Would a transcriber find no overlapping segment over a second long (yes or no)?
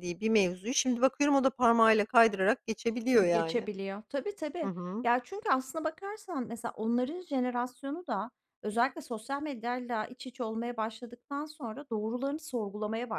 yes